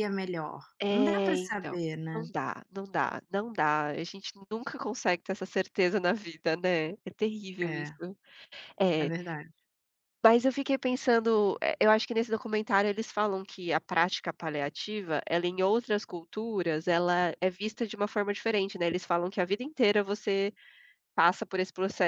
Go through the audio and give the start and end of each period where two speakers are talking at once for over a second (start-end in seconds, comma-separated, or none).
0.8-2.3